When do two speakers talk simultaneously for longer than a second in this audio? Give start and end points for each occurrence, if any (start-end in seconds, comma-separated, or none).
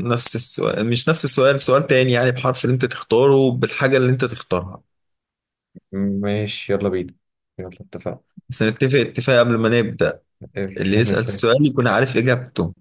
none